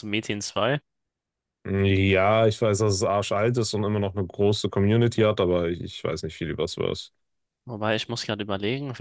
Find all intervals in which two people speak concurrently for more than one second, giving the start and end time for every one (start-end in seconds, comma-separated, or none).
none